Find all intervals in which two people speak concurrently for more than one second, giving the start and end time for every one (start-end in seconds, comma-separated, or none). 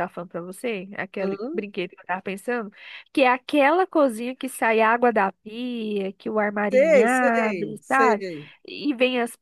6.7-8.2